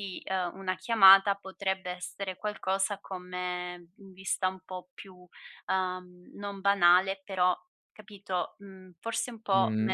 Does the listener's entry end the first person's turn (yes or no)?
yes